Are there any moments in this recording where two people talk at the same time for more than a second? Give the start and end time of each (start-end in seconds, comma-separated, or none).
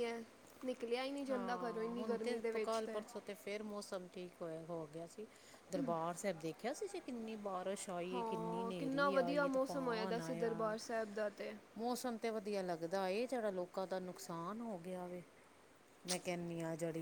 1.3-2.8